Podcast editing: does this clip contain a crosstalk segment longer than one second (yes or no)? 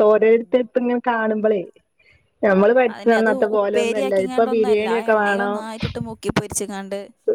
yes